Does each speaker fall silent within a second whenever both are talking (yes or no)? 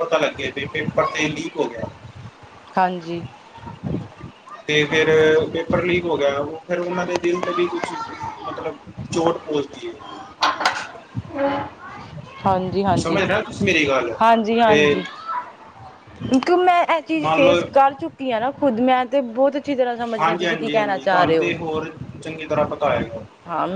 no